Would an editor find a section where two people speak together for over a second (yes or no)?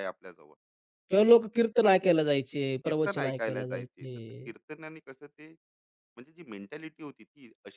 yes